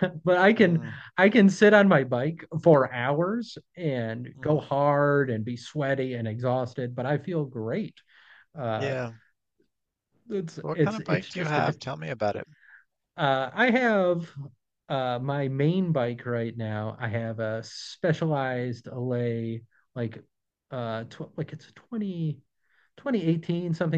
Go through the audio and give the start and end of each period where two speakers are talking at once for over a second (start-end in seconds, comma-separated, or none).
10.6-11.8